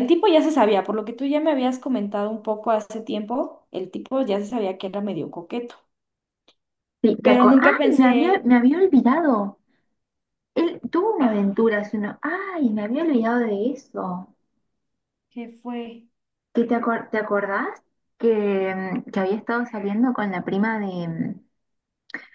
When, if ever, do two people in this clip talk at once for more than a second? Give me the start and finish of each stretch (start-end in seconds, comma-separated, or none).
7.2-8.4